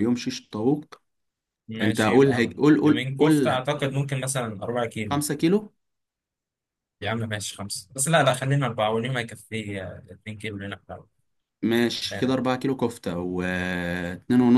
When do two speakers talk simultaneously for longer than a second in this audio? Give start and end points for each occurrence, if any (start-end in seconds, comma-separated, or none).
1.8-3.6